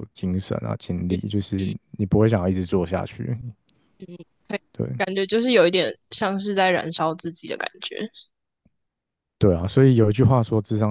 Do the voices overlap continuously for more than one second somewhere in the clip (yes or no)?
no